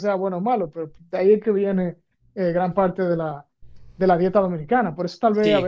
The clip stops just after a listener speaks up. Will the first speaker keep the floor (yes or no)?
no